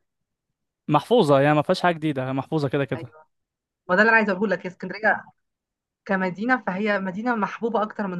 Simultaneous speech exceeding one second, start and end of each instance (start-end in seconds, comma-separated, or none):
none